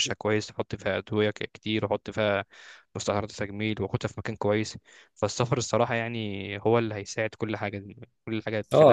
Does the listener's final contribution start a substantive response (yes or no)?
yes